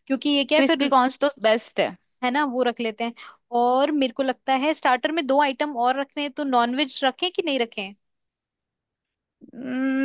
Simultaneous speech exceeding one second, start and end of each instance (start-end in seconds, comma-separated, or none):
none